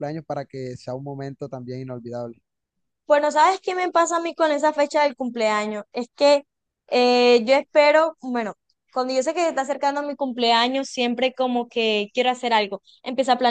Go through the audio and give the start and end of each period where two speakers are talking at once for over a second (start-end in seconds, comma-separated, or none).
none